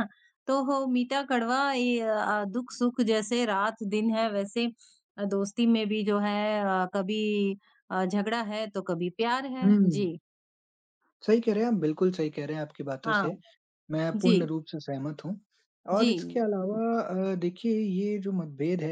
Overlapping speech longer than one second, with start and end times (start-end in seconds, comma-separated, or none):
none